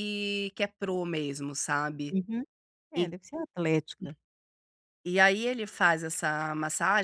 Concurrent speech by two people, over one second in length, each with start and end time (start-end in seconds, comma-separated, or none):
none